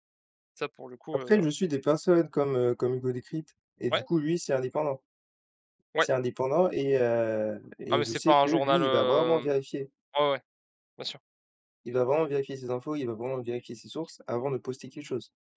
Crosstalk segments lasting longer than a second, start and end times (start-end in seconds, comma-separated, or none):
7.9-9.5